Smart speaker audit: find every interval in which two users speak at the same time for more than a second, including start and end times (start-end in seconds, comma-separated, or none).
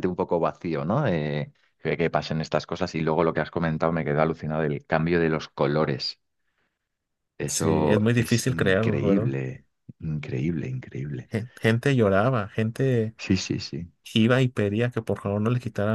7.4-9.3